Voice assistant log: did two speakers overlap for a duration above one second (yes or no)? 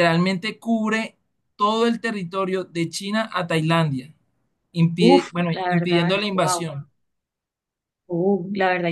yes